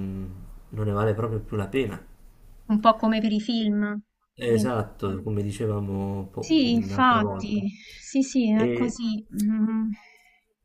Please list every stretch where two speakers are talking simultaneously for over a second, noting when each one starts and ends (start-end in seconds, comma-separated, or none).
6.4-7.6